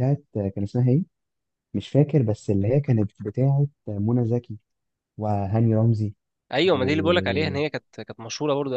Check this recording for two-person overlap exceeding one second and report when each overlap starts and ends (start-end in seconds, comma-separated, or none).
none